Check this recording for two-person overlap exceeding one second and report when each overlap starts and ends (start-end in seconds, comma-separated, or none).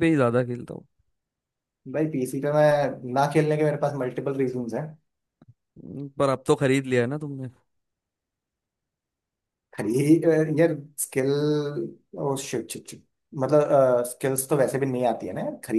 none